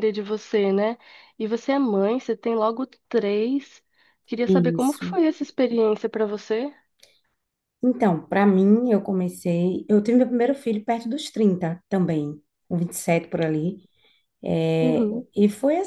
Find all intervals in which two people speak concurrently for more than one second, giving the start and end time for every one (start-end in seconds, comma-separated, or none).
none